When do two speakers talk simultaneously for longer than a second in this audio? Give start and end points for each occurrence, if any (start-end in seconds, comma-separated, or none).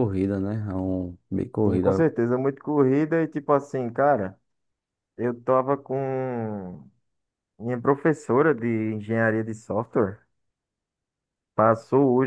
none